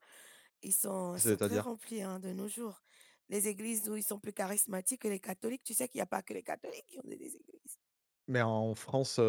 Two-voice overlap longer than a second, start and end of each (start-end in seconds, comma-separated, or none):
none